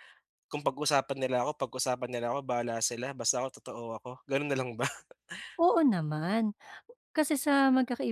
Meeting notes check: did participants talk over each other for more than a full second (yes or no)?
no